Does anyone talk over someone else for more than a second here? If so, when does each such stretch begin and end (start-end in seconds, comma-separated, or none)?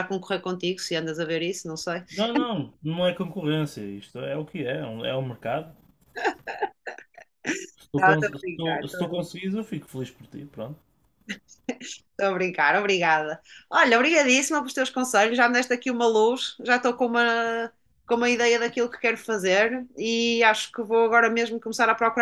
8.0-9.4